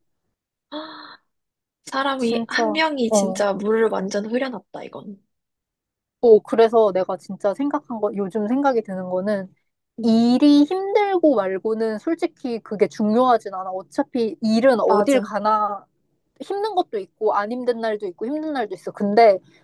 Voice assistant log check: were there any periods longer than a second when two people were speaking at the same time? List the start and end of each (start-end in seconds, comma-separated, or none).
2.2-3.5